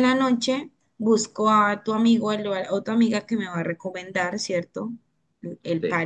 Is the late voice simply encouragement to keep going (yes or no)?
no